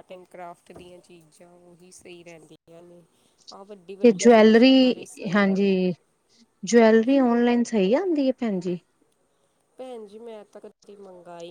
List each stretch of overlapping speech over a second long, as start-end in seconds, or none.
4.0-5.7